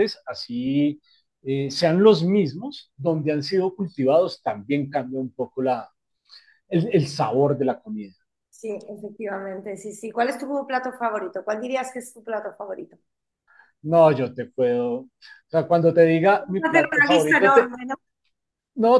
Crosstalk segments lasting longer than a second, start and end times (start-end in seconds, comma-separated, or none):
16.4-17.7